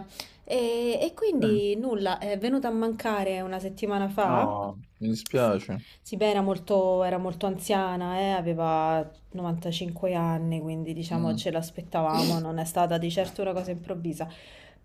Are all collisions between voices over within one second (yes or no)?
yes